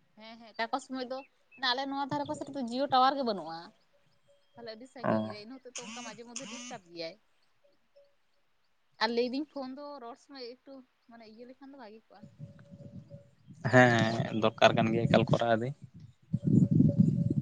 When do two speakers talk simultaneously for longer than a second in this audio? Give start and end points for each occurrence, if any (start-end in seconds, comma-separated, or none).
13.7-15.7